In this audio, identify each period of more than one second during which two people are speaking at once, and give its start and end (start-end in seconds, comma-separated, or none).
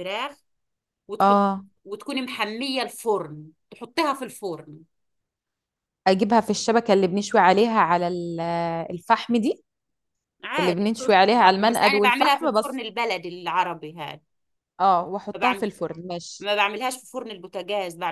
10.6-12.8